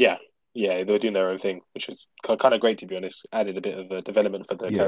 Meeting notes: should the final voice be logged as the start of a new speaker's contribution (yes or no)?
yes